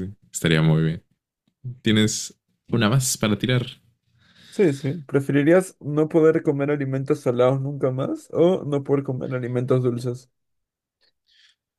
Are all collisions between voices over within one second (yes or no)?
yes